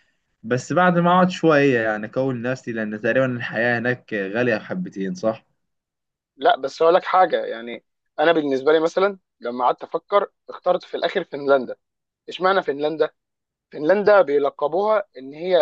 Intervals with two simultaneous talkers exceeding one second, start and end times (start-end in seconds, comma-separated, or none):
none